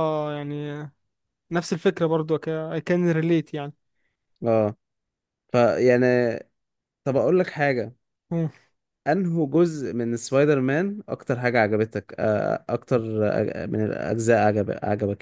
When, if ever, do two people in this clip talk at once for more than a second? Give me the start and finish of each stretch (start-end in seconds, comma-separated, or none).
none